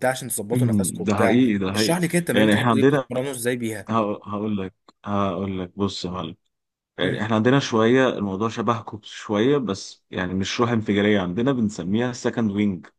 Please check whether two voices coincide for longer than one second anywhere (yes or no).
yes